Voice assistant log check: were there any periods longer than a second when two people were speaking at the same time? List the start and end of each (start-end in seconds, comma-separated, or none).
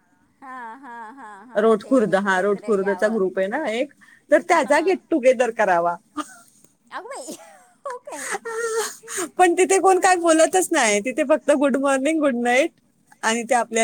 1.6-3.2